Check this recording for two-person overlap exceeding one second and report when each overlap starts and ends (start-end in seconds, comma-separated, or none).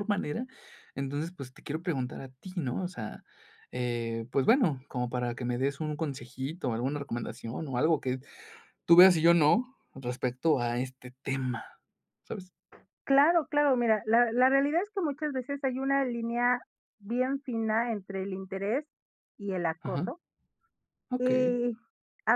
none